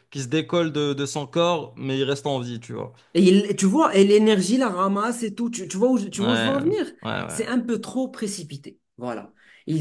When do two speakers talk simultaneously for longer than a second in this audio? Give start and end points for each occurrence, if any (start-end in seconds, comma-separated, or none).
none